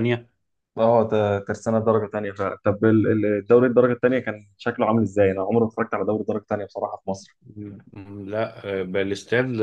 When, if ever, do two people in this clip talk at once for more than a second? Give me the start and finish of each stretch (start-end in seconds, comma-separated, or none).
none